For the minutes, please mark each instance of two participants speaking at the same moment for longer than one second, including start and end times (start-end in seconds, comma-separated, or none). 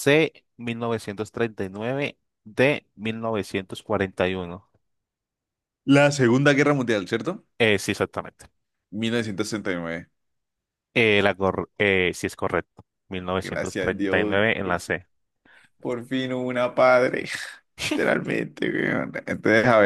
13.4-14.9